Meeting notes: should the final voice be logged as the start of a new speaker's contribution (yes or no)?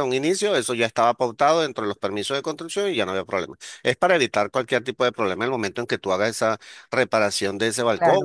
yes